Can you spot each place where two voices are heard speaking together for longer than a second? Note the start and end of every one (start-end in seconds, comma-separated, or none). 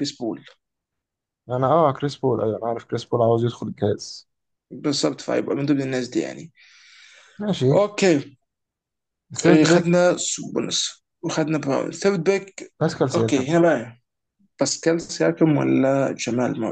none